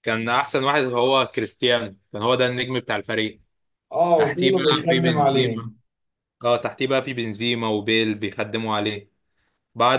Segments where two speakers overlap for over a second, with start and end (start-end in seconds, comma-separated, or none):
4.2-5.6